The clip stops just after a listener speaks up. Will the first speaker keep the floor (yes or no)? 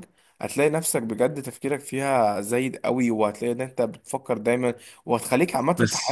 yes